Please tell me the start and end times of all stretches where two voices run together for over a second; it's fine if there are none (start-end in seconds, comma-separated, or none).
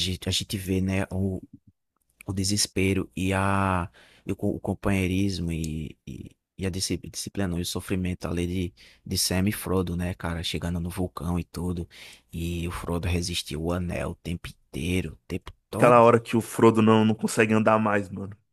none